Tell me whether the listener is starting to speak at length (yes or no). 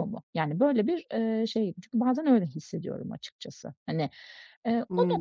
no